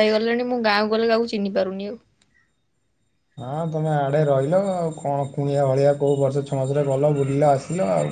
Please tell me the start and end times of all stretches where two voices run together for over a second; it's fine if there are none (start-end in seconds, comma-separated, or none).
none